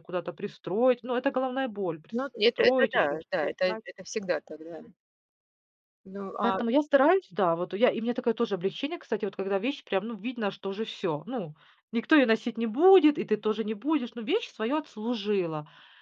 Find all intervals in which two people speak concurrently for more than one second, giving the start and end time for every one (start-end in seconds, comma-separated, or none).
2.1-3.8